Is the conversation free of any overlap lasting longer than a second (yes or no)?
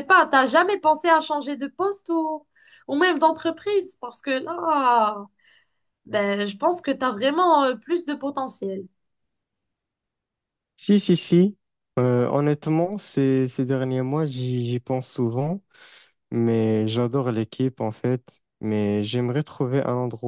yes